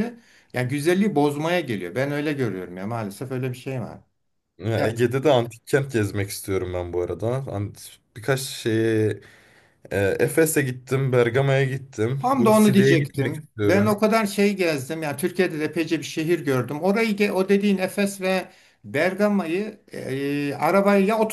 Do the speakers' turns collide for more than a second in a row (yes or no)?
yes